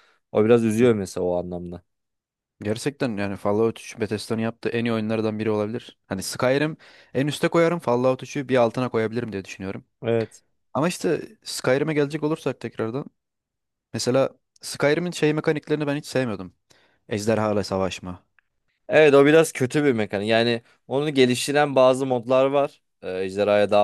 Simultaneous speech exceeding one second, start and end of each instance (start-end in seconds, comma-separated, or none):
none